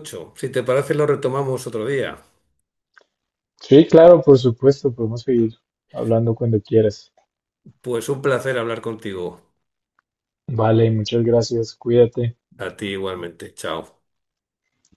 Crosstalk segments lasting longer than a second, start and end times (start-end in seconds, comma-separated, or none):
none